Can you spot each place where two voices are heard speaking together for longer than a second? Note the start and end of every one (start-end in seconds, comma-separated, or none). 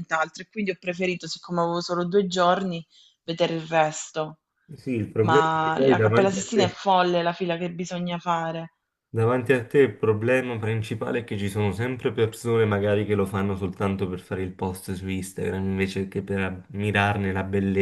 5.2-6.8